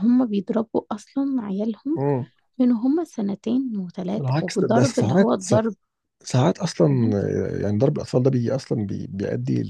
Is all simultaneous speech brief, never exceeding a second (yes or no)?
no